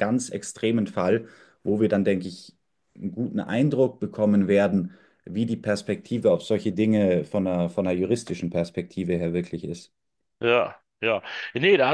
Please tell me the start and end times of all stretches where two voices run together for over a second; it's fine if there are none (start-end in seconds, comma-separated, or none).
none